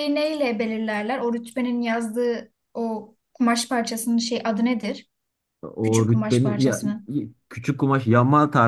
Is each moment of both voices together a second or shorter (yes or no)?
no